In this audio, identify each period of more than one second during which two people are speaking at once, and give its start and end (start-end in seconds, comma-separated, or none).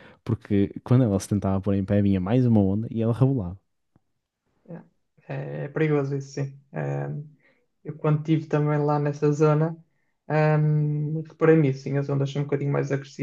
none